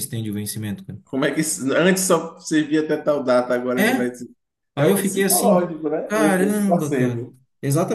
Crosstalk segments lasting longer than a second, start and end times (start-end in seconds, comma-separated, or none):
4.8-7.4